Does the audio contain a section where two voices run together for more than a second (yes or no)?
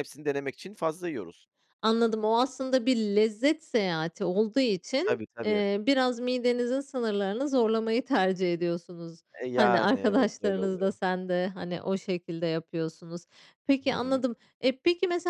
yes